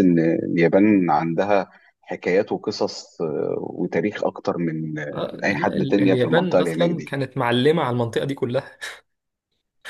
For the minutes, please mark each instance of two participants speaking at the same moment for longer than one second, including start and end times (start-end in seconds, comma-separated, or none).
5.1-7.2